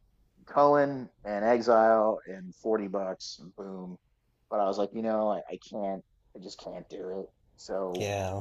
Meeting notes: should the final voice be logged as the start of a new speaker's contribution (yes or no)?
yes